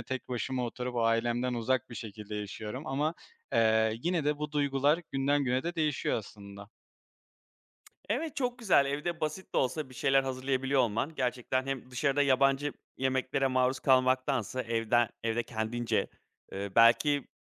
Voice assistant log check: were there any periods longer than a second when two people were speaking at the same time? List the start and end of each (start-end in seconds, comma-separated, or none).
none